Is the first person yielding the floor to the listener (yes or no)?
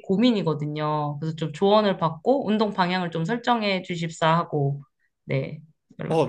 yes